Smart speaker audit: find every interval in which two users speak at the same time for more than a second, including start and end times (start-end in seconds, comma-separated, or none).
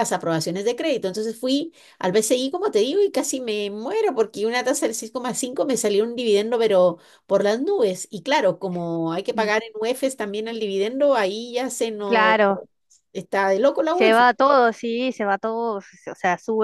none